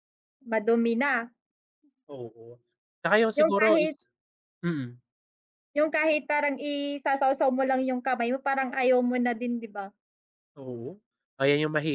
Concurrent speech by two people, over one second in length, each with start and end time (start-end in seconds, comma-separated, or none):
none